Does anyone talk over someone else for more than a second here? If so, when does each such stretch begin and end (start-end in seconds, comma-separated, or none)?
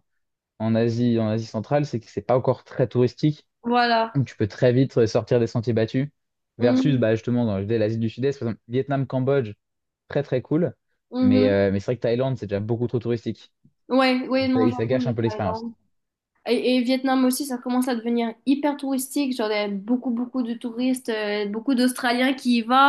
14.4-15.7